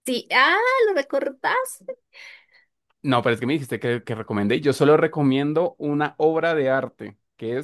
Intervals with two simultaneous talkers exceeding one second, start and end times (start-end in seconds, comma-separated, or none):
none